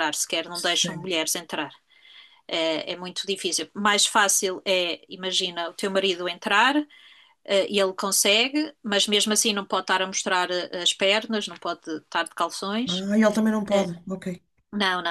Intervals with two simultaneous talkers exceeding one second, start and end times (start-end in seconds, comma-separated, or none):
none